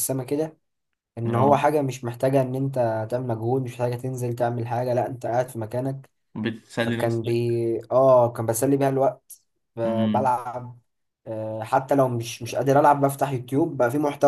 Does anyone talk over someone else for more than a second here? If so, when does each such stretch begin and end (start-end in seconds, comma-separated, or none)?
none